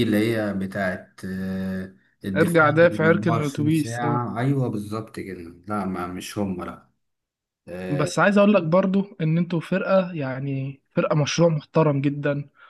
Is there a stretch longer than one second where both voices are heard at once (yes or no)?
yes